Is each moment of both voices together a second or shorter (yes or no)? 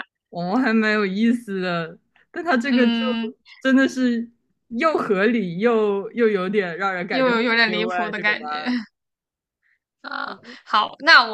no